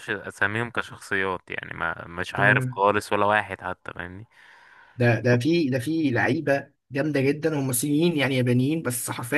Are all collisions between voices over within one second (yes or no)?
yes